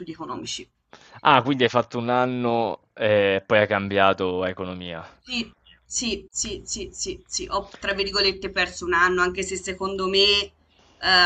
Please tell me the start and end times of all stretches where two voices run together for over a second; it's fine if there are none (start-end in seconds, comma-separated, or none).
none